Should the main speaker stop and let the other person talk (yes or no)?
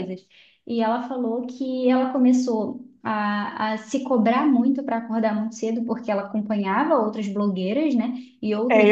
yes